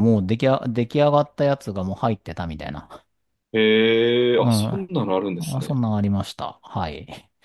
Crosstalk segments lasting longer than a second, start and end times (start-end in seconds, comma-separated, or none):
none